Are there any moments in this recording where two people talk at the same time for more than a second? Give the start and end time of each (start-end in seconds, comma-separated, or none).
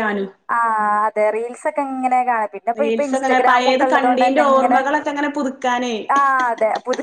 2.8-4.8